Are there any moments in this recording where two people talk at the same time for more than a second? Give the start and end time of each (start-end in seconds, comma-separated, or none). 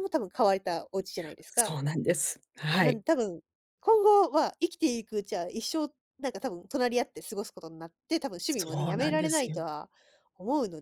8.4-9.7